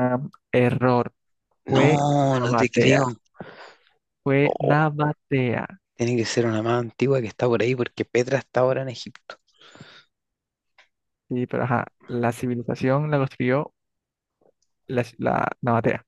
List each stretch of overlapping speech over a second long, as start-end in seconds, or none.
1.7-3.0